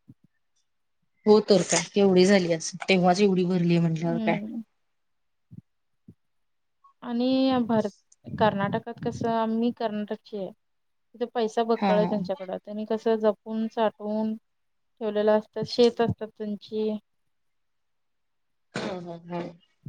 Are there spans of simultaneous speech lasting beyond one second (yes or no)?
no